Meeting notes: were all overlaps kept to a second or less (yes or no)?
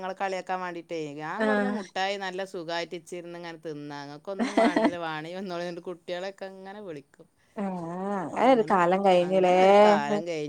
yes